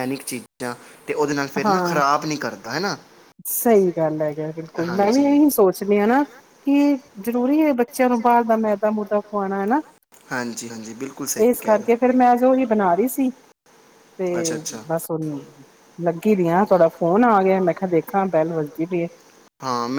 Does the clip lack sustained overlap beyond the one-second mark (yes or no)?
yes